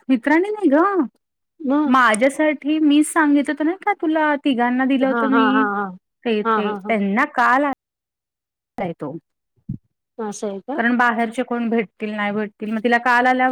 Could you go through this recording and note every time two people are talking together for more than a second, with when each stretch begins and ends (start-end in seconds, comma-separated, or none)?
none